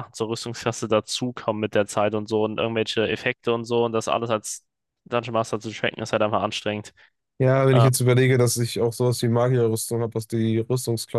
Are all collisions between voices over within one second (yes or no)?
yes